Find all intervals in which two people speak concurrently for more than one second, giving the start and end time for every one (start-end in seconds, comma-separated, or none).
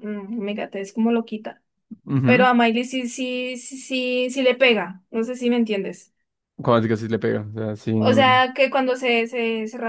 none